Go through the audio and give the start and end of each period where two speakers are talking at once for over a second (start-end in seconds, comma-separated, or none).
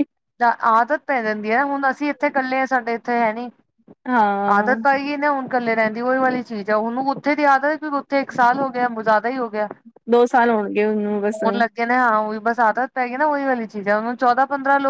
none